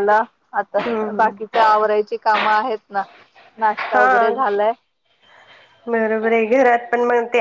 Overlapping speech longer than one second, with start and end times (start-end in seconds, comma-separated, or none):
none